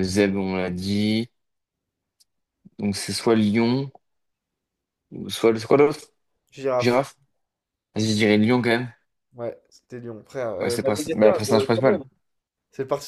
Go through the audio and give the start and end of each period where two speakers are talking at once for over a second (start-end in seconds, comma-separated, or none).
10.6-12.0